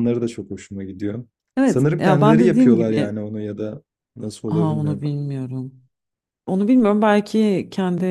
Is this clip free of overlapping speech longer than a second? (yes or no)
no